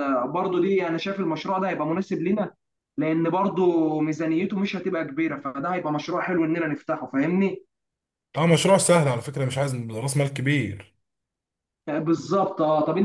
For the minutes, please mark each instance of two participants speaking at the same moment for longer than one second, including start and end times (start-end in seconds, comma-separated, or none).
none